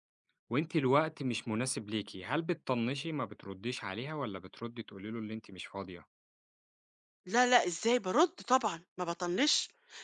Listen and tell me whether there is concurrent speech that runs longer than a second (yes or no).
no